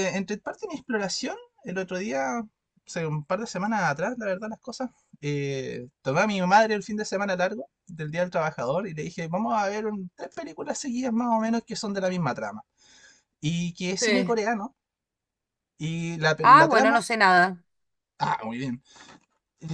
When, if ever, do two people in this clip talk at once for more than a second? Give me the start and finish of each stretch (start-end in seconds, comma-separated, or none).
none